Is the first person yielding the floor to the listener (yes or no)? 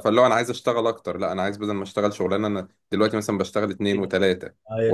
no